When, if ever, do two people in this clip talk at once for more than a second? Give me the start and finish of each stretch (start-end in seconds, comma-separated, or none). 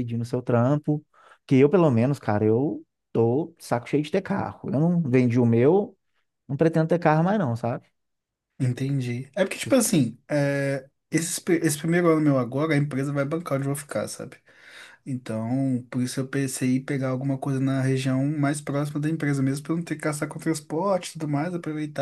none